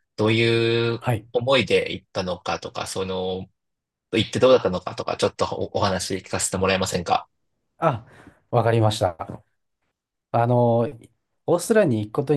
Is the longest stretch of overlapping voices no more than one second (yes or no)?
yes